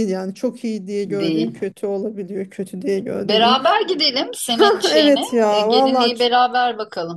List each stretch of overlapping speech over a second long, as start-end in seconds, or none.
4.6-6.3